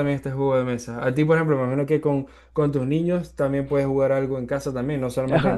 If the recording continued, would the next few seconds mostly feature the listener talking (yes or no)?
yes